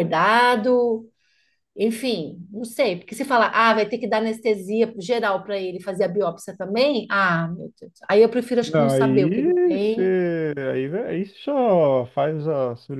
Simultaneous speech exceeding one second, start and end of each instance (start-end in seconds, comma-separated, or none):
8.6-10.1